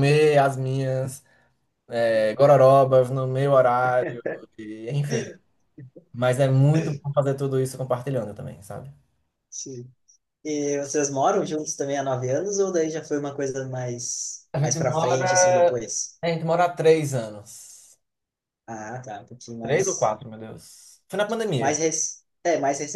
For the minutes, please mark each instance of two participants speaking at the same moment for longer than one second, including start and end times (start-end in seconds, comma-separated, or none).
14.5-15.8